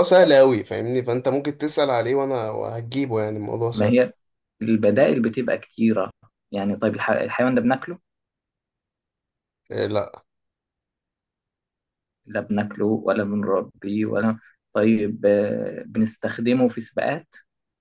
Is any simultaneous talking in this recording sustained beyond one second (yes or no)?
no